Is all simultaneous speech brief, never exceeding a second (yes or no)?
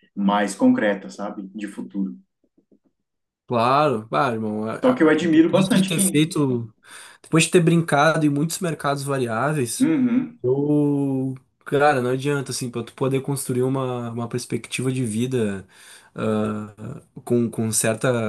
no